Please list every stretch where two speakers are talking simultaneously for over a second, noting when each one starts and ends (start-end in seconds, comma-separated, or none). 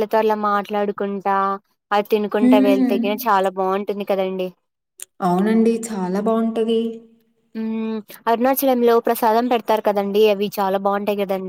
none